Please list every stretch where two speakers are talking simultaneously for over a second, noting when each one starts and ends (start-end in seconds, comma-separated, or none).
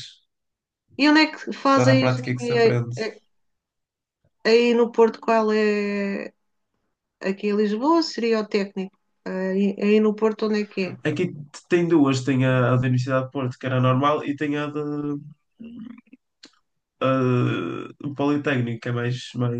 1.7-2.9